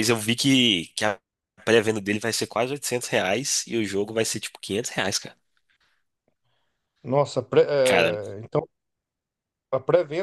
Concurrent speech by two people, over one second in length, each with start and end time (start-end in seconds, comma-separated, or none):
none